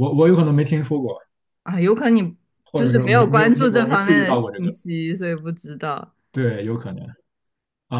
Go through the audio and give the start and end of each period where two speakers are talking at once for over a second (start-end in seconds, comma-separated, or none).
2.7-4.7